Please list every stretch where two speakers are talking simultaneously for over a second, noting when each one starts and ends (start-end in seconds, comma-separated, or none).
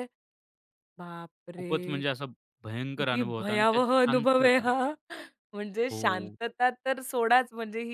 3.0-4.6